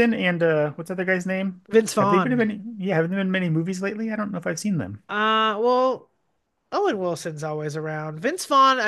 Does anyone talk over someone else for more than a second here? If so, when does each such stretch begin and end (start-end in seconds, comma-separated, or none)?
none